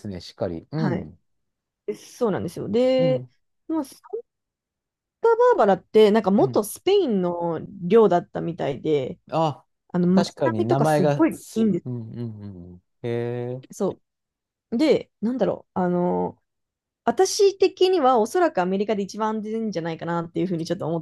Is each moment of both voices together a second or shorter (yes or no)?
no